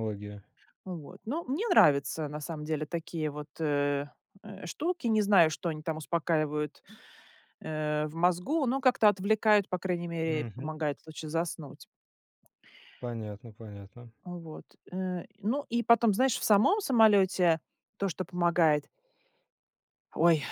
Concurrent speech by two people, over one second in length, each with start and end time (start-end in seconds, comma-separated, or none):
none